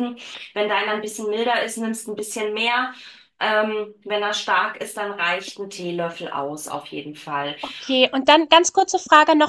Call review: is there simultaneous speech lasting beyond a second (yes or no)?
no